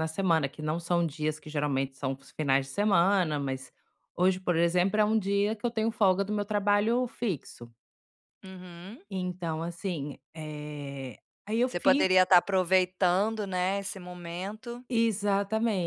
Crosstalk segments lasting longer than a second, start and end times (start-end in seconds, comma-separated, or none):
none